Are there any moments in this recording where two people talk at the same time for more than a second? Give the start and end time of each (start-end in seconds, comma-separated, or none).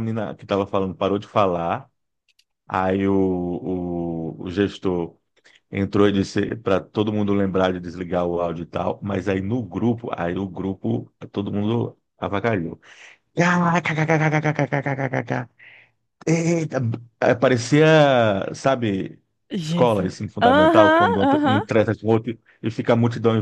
19.6-21.6